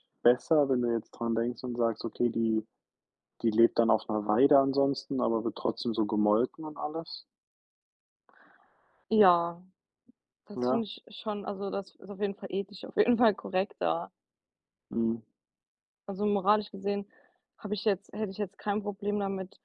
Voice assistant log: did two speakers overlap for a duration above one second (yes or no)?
no